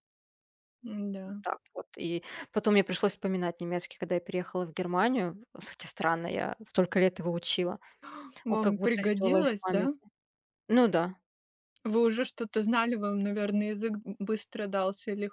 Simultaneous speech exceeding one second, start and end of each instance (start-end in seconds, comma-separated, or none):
8.5-9.9